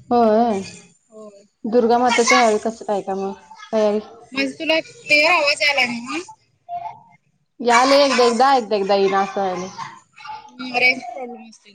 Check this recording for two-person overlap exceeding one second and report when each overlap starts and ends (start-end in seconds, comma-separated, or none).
none